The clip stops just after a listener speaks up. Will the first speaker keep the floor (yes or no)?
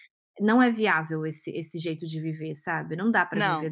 yes